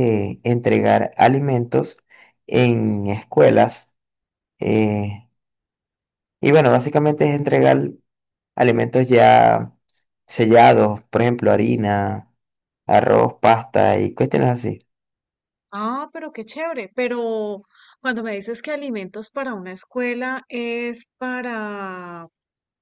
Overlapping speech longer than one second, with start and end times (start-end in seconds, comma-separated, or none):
none